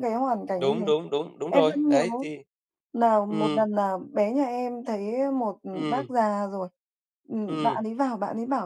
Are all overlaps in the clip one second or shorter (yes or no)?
yes